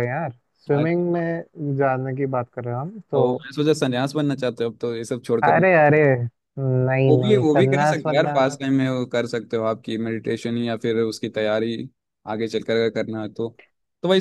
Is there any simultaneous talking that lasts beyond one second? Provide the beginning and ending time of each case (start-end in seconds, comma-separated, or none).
7.1-8.4